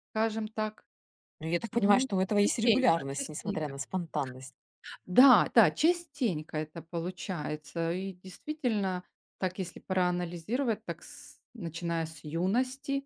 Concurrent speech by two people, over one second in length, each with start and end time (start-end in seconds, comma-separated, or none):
1.7-3.7